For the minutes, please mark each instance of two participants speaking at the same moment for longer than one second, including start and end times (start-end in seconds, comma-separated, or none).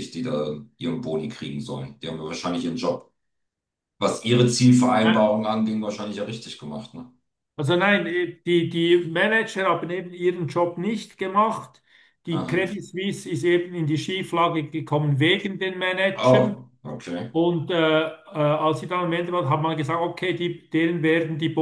none